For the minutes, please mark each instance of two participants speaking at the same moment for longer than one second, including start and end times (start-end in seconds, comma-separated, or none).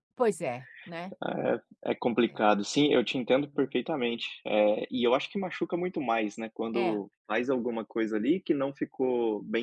none